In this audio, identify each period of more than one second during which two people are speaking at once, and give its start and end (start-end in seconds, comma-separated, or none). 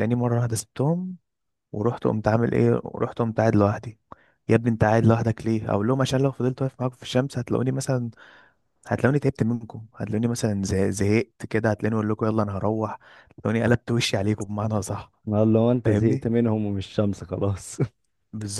none